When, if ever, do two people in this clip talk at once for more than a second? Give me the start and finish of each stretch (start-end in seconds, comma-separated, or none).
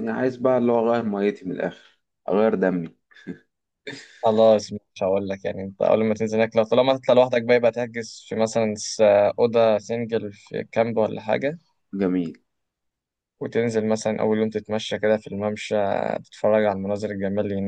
none